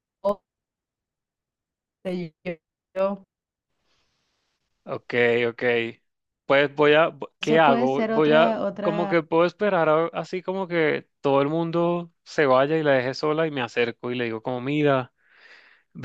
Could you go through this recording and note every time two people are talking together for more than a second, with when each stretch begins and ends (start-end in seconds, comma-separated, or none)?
7.4-9.1